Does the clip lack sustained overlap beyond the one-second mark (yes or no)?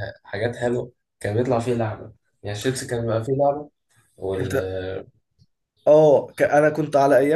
yes